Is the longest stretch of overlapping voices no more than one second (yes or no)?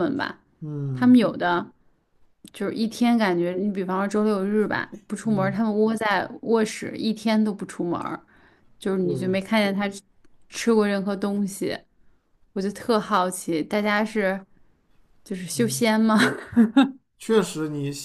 yes